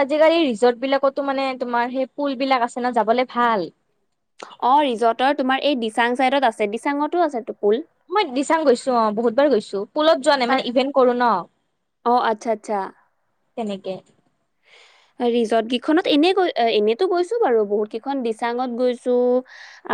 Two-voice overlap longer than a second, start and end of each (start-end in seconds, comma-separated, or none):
none